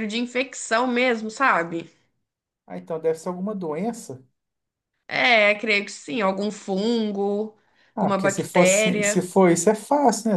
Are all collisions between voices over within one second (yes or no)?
no